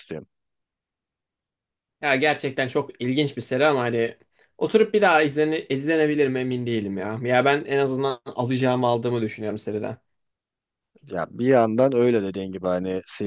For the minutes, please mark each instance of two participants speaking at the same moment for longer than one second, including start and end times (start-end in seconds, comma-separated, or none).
none